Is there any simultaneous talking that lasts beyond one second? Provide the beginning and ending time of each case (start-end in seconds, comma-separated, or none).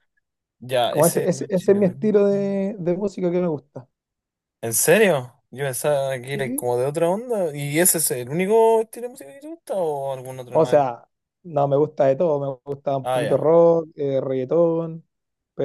0.9-2.4